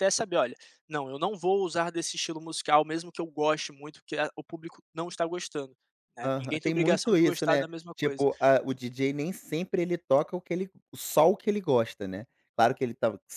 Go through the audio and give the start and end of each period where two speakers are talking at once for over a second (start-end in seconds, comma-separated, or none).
6.2-8.3